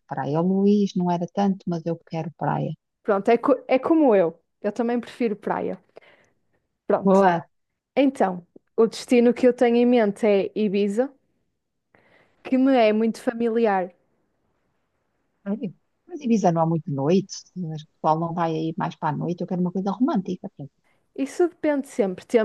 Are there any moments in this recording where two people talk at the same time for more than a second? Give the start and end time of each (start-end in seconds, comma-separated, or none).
none